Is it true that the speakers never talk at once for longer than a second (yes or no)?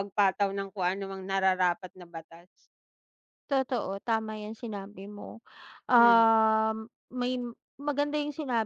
yes